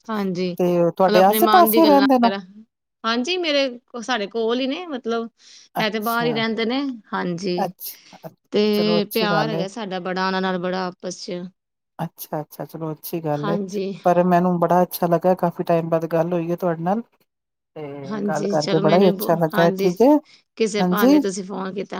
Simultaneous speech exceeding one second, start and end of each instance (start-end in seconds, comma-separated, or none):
0.6-2.3, 18.1-19.9